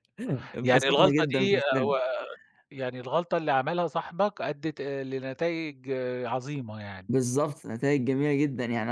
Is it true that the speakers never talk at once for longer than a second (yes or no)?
no